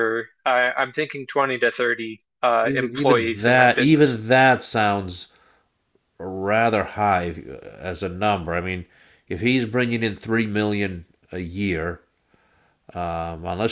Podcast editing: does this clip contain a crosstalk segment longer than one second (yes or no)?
yes